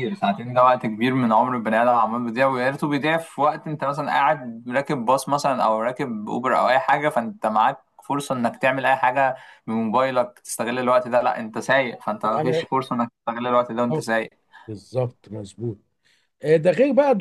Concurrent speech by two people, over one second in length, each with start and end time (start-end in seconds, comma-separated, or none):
none